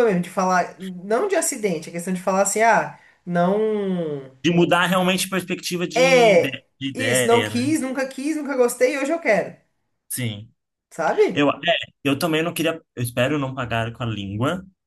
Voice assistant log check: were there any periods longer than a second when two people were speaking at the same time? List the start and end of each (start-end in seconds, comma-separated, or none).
6.0-7.7